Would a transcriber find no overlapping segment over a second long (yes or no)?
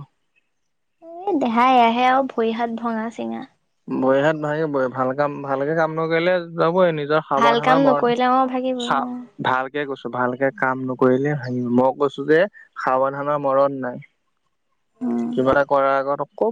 no